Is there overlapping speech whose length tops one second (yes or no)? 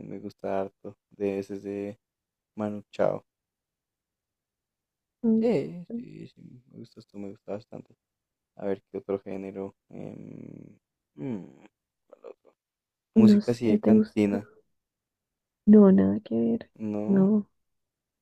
yes